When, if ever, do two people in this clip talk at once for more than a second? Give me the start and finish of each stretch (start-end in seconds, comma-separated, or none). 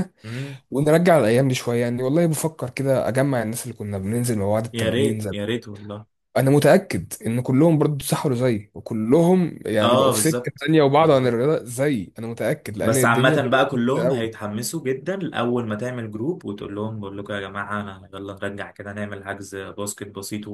9.8-11.4, 12.8-14.3